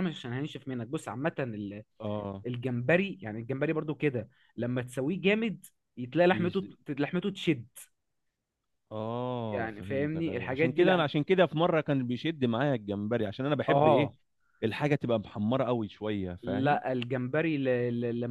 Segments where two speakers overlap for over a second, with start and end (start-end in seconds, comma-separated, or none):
9.5-11.0